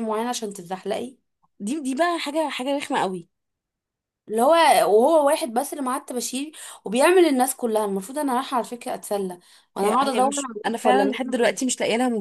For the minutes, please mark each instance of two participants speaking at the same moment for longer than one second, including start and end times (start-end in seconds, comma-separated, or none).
9.8-11.6